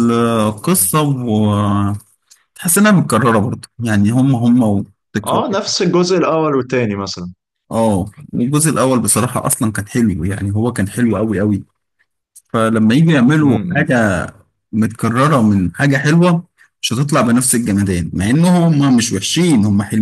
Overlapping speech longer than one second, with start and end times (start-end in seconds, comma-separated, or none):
none